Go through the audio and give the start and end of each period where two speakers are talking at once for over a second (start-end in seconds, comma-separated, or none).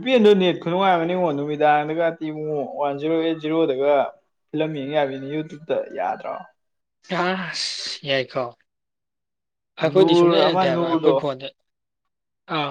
9.8-11.4